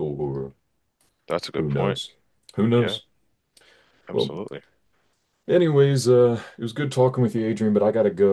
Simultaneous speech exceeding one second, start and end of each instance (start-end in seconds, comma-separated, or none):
none